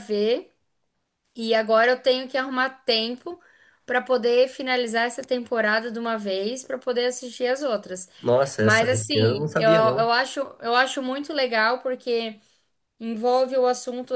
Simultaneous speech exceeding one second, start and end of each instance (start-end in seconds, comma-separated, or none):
8.6-10.1